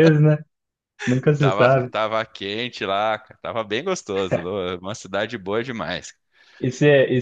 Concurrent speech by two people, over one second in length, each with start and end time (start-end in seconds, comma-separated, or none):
none